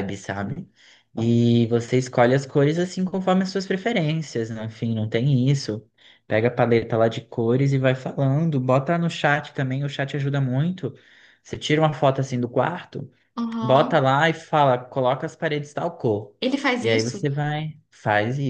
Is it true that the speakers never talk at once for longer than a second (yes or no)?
yes